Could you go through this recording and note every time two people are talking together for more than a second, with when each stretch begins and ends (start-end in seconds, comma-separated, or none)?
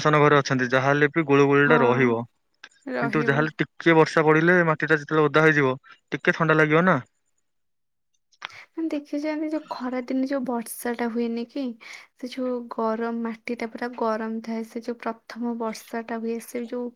none